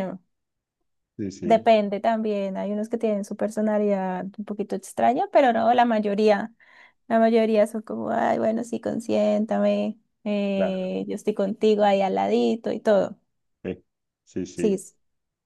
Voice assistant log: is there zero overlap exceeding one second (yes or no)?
yes